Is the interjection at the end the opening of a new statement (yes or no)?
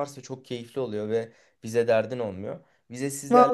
no